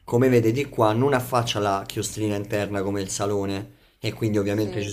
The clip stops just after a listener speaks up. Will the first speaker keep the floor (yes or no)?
yes